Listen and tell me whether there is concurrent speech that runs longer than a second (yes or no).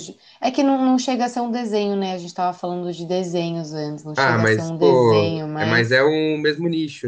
yes